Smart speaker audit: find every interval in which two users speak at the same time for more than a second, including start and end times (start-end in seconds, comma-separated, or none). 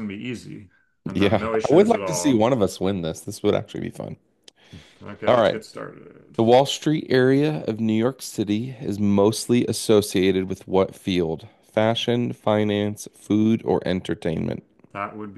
1.1-2.5